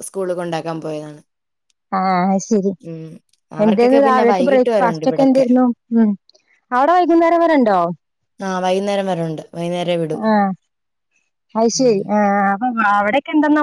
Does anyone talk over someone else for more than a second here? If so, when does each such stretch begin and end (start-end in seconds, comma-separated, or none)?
3.6-5.5